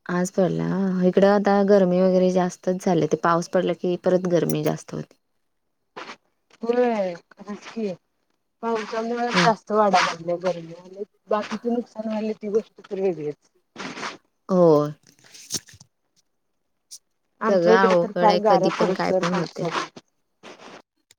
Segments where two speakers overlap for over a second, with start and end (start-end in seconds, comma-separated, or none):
17.5-19.7